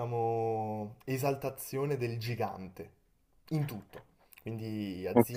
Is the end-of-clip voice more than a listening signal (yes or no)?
no